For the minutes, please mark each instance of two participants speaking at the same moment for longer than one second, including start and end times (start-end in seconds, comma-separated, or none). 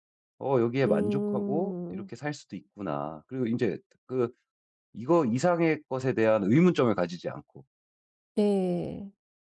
0.8-2.1